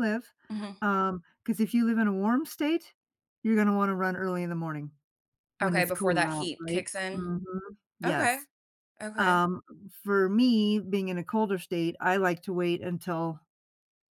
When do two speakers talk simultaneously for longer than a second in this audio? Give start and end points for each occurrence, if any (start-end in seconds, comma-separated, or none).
5.6-7.3